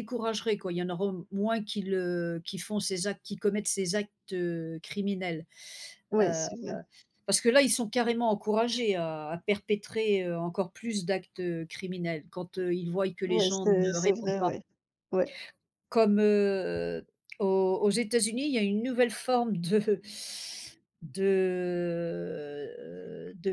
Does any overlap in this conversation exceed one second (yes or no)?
yes